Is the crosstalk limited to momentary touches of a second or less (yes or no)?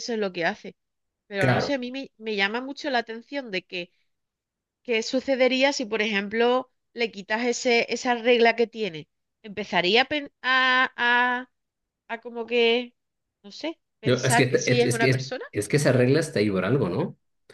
no